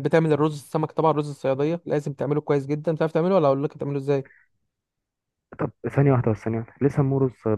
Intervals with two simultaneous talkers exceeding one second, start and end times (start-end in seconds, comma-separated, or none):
none